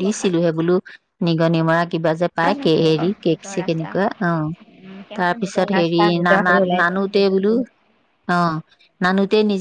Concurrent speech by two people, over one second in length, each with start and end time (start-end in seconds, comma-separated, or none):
5.2-7.0